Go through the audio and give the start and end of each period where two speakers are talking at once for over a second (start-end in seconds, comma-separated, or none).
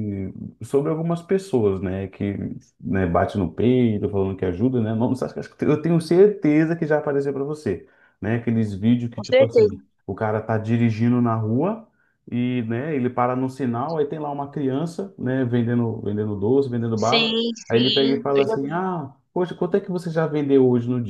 16.9-18.8